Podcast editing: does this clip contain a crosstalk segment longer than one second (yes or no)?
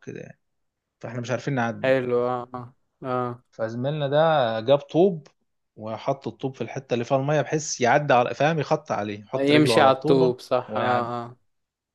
yes